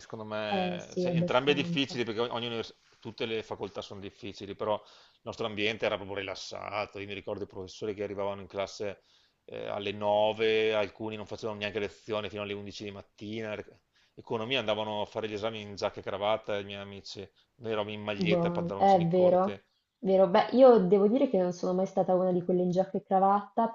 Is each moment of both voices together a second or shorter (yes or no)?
no